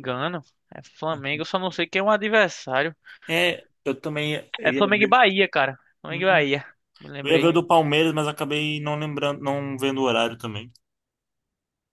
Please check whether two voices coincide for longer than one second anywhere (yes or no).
no